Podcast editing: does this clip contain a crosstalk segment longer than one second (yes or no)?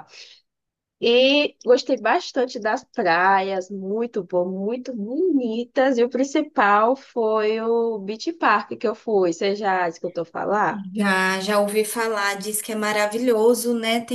no